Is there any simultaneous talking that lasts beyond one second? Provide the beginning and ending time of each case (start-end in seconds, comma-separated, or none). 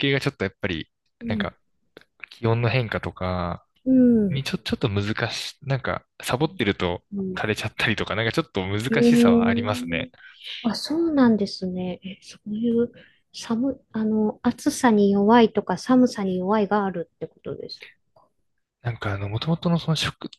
8.9-10.1